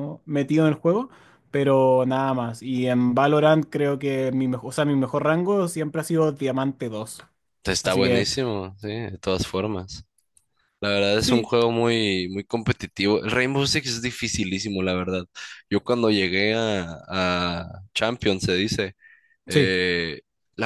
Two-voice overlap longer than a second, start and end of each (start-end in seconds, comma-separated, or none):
none